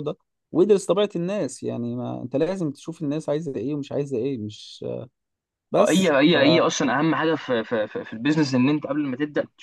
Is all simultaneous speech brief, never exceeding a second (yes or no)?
yes